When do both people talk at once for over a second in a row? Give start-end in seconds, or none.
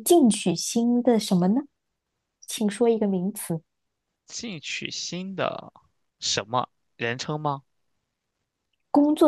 none